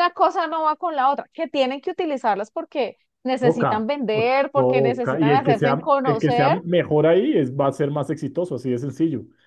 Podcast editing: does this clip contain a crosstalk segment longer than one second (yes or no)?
yes